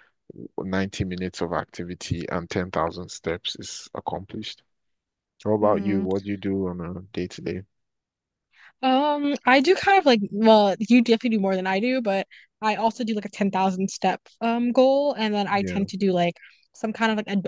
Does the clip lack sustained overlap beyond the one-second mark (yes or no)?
yes